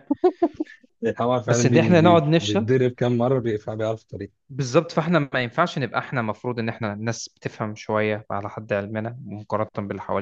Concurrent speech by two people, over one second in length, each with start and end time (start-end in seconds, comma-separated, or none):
1.4-2.7